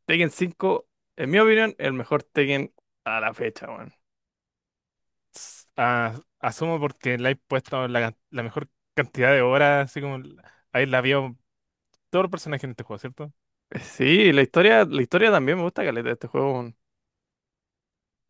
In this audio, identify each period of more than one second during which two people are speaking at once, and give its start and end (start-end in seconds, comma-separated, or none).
none